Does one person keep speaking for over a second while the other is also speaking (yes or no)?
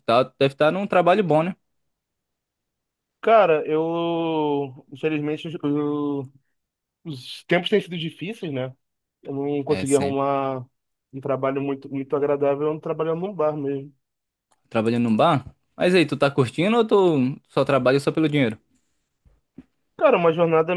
no